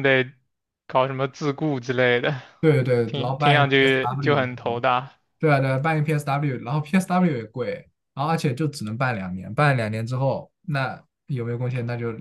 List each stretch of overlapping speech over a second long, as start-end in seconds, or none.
3.0-4.8